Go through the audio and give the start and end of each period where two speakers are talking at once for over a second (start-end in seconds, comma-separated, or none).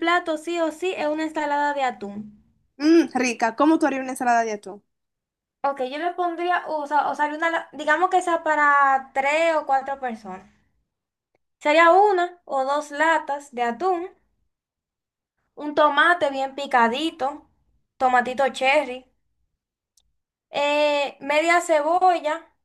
none